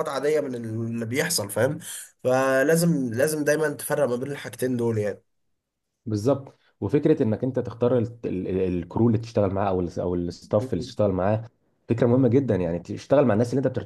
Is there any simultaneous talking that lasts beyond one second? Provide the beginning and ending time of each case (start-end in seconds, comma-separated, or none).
none